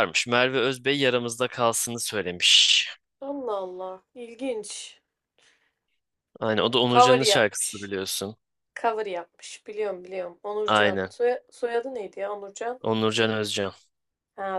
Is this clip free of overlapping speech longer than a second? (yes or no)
no